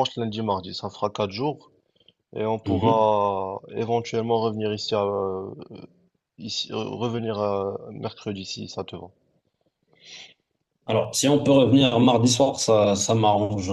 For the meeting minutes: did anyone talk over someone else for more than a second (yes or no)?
no